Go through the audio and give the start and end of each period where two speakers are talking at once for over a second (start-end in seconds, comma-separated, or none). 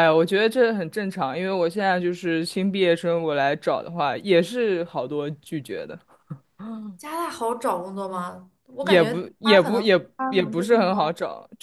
8.8-11.1